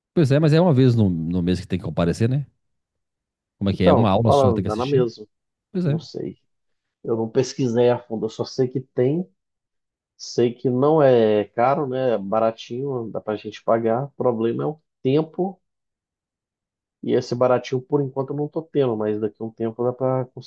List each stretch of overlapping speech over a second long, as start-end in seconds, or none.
3.7-5.1